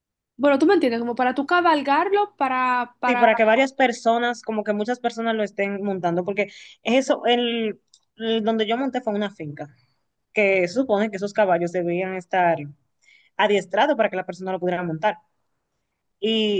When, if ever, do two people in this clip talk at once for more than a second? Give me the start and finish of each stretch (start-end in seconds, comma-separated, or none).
none